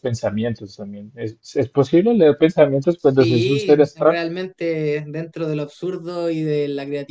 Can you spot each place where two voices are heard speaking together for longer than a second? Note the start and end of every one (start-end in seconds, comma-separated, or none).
3.0-4.2